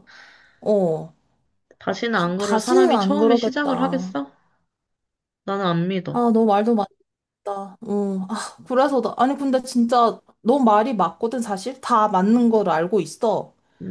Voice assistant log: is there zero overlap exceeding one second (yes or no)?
no